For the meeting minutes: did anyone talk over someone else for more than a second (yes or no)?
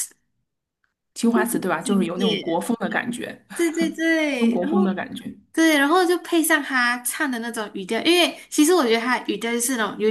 yes